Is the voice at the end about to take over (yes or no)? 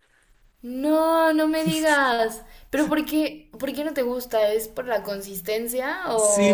yes